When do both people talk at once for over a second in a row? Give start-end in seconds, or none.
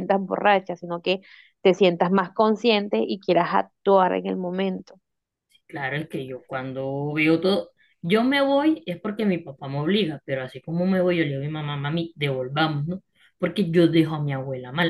none